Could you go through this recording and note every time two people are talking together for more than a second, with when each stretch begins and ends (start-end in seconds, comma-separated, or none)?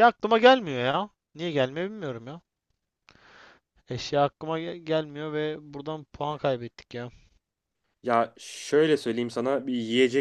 none